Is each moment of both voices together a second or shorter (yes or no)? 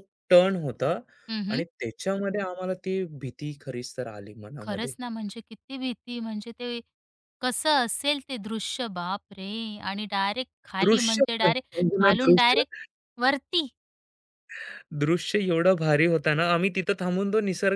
no